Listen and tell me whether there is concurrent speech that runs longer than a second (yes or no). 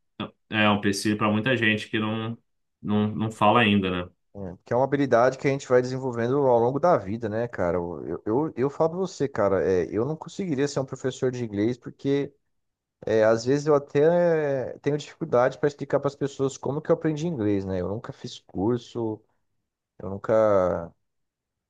no